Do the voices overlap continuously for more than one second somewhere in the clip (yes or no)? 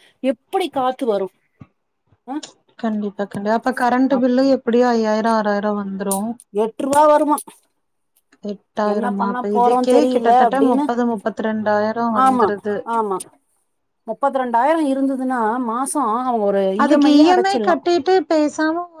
yes